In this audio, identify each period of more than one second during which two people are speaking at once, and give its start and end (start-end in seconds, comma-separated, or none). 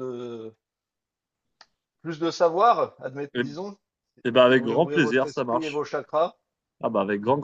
4.5-5.8